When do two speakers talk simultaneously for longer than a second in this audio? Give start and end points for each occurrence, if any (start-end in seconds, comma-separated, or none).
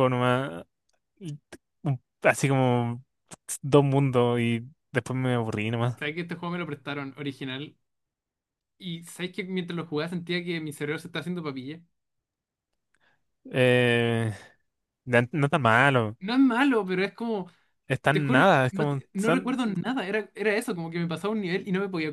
18.1-19.6